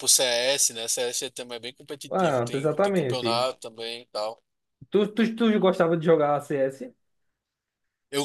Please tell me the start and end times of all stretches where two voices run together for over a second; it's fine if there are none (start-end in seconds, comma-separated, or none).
2.1-3.5